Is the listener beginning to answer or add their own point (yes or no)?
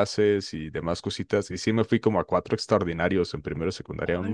no